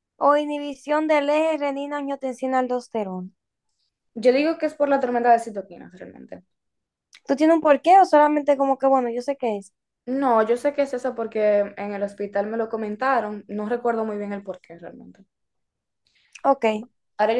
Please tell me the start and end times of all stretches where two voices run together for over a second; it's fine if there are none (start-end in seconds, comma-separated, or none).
none